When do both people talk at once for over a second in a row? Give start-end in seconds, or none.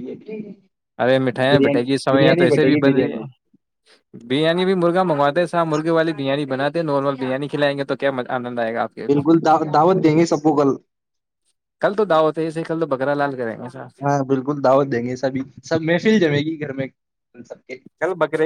1.5-3.2